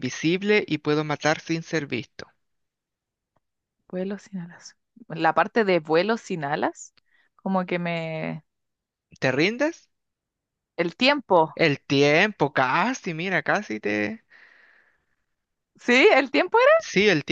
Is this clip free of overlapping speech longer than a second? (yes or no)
yes